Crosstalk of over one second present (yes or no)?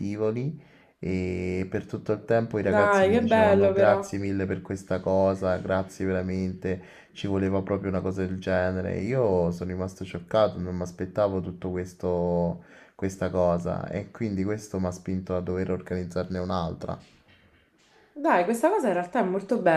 yes